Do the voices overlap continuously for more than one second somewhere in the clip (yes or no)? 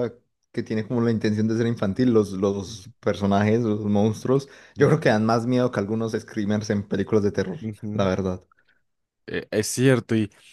no